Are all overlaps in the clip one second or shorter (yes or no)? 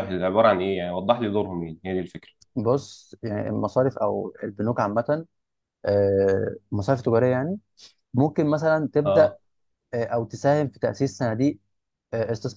yes